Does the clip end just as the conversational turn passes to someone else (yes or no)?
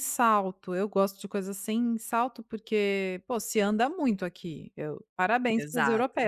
no